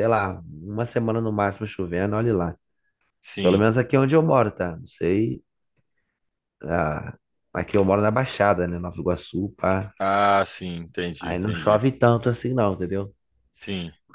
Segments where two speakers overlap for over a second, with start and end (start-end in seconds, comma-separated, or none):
none